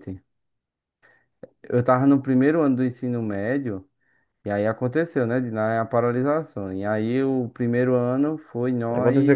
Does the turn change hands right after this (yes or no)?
yes